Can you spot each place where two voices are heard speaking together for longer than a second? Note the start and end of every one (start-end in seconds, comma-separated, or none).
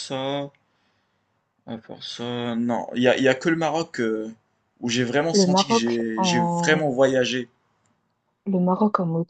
5.3-6.9